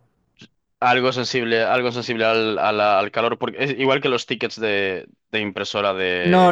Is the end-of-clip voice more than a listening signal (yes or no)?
yes